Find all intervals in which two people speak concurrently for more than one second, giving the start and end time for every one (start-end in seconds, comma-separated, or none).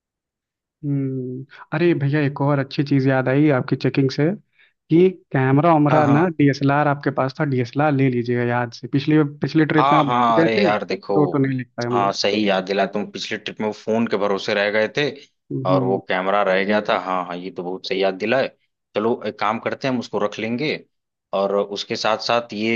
9.8-11.1